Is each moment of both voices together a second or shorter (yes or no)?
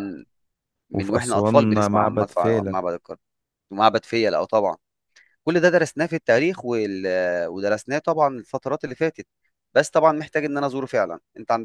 no